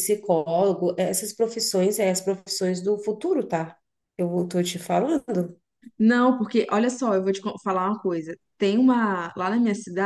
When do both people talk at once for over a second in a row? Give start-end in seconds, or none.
none